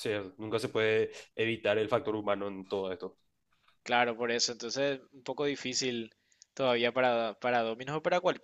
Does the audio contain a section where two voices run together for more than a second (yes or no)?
no